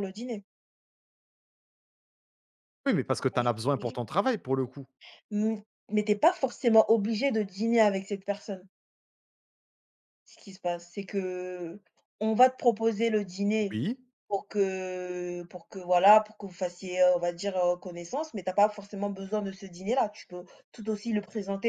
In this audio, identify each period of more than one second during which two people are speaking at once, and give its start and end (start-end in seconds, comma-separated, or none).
none